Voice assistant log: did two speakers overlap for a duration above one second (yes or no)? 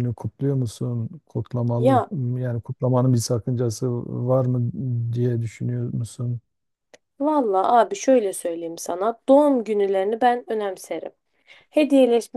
no